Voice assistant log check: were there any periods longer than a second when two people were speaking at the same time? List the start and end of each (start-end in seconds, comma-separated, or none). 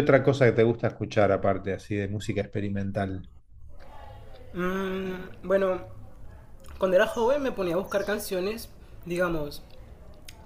none